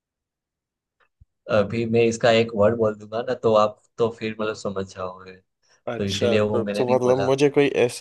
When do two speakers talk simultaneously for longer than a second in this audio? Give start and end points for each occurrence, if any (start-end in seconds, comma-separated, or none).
6.0-7.3